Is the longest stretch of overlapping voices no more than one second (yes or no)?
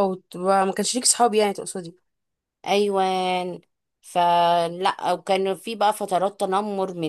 yes